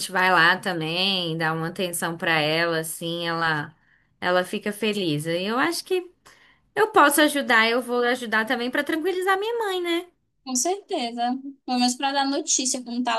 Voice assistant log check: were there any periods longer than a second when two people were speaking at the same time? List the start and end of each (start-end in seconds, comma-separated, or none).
none